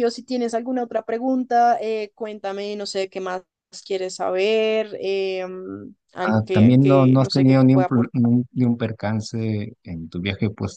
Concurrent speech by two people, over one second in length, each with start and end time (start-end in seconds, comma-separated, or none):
6.2-8.2